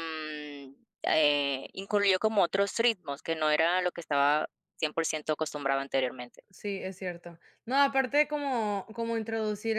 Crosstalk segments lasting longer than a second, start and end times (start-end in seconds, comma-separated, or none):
none